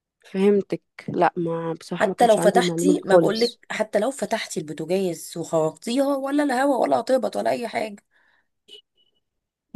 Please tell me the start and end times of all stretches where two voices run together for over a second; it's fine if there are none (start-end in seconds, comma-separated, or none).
1.9-3.6